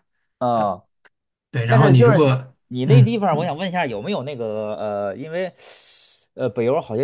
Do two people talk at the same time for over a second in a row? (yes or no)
yes